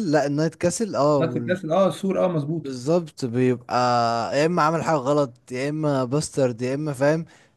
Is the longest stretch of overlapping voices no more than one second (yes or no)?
yes